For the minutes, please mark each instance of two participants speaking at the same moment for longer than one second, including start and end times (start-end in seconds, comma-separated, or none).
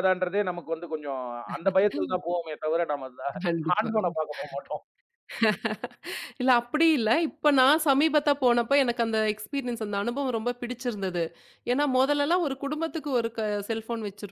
none